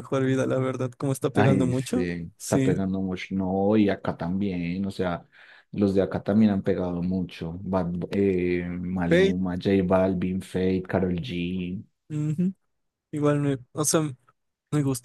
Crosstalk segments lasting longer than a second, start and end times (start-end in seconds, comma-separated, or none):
1.3-2.7